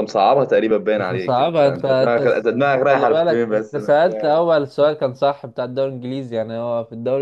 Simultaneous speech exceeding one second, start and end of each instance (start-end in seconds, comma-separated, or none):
1.0-4.4